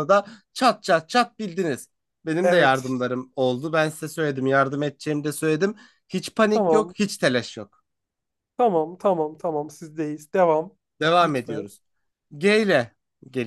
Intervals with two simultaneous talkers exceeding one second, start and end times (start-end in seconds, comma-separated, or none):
none